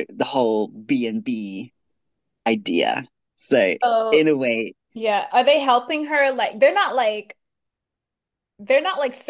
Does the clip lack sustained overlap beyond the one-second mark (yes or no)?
yes